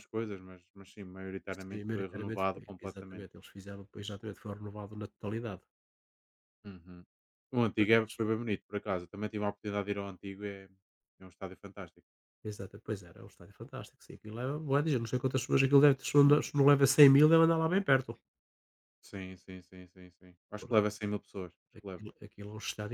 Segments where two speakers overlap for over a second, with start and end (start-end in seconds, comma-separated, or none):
1.6-3.3